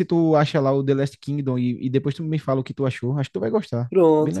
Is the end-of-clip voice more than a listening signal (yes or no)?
yes